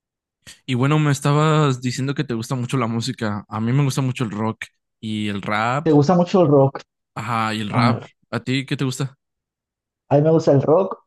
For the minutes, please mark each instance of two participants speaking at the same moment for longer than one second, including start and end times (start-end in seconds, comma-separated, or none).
none